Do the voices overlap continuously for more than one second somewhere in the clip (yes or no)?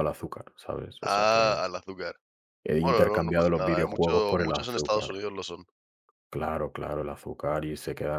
yes